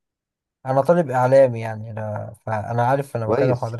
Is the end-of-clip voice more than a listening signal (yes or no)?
yes